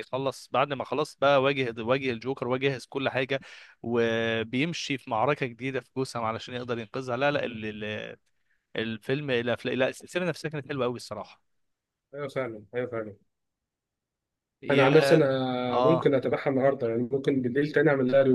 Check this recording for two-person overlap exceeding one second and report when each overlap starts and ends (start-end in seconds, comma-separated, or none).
none